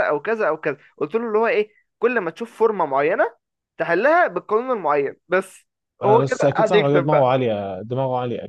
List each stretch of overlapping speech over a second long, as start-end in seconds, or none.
6.0-7.3